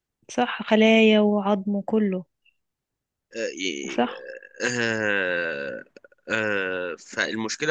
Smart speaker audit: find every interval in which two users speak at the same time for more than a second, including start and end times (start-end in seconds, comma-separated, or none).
none